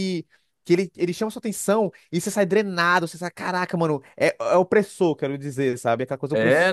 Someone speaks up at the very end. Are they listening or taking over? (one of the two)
taking over